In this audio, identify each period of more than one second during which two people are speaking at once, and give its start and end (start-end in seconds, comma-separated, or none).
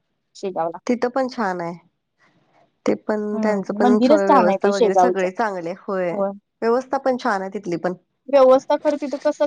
3.4-5.2